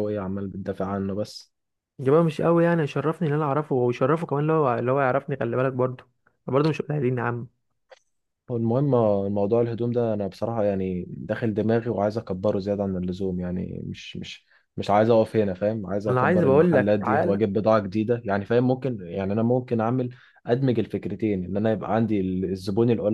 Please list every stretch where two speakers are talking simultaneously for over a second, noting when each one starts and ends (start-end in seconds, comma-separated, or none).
16.1-17.4